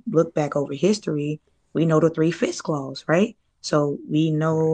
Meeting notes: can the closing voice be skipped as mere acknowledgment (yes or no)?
yes